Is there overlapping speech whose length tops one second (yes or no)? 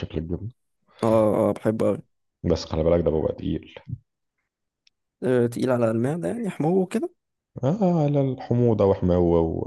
no